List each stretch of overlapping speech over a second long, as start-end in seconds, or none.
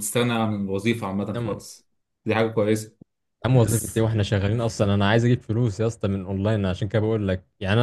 none